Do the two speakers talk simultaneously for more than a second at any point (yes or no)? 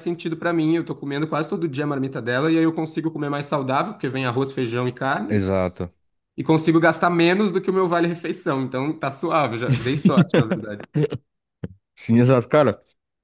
no